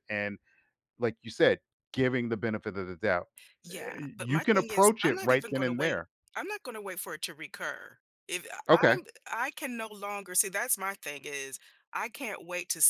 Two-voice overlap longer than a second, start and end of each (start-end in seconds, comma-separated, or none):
3.7-6.1